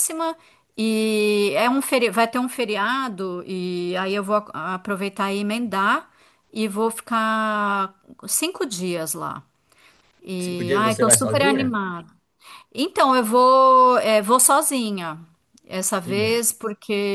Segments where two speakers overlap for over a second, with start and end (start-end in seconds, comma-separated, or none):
10.4-11.8